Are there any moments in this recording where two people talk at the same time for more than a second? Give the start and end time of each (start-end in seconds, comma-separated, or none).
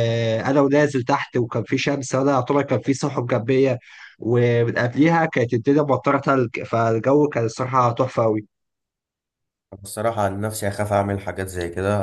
none